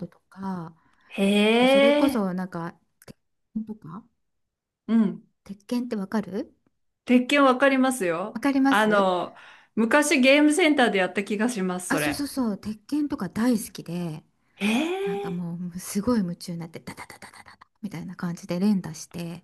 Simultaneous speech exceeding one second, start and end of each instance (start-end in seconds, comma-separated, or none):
none